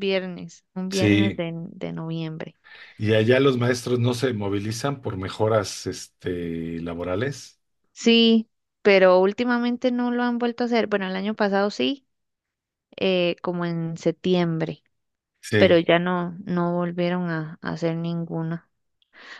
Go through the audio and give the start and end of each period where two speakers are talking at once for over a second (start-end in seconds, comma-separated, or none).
none